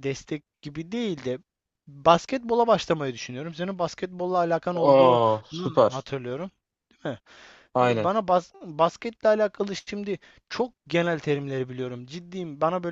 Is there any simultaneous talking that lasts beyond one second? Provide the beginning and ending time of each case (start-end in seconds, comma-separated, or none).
4.8-6.1